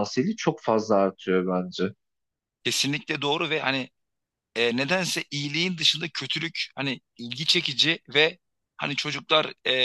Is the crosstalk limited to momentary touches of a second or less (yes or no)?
yes